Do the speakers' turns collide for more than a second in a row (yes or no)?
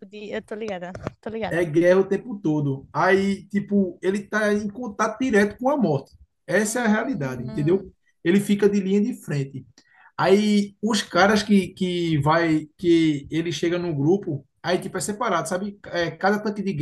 yes